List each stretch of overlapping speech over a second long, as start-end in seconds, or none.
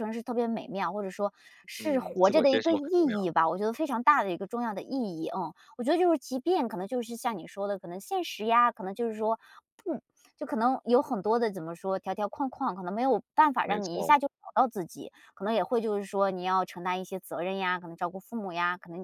1.8-3.3